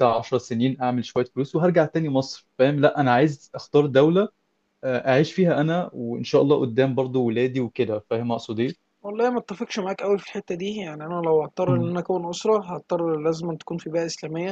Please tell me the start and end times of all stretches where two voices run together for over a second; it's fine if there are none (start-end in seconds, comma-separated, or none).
none